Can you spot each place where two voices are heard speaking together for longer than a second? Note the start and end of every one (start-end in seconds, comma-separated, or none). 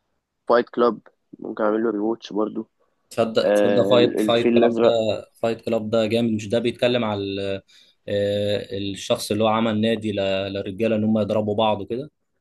3.4-4.9